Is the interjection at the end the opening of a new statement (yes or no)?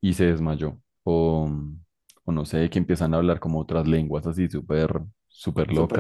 no